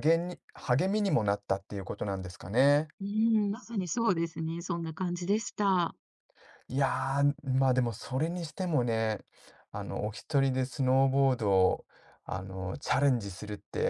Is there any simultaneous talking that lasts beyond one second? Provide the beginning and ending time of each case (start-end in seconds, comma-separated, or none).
none